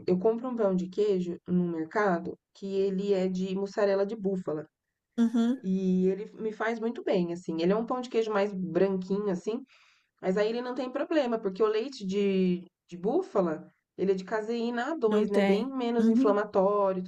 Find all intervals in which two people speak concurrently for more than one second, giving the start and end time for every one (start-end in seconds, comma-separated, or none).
15.1-16.4